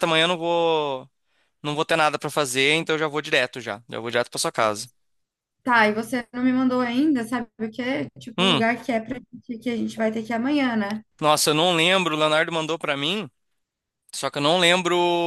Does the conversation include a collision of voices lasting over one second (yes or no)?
no